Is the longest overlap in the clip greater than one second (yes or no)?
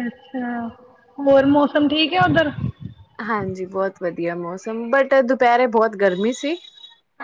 no